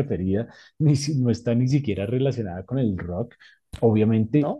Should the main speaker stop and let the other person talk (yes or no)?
no